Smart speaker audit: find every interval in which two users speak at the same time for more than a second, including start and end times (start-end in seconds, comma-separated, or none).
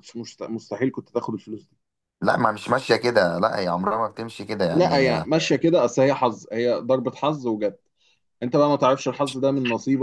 none